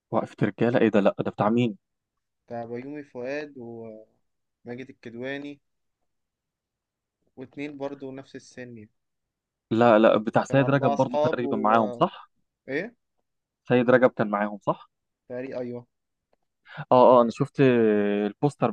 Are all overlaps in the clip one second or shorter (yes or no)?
no